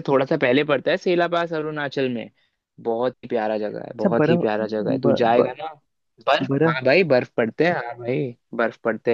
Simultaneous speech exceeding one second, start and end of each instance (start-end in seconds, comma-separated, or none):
3.9-5.5